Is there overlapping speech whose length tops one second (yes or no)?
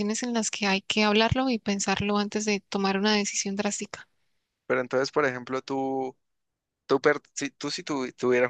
no